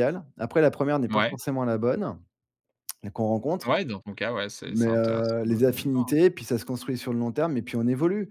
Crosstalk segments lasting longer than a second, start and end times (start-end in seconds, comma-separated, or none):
4.7-6.2